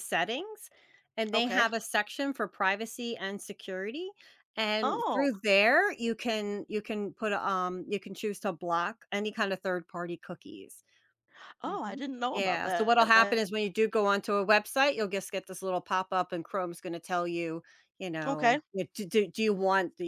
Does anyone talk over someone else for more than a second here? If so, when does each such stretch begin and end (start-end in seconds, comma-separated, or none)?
11.7-13.4